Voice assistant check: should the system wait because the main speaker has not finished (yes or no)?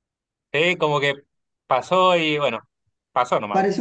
no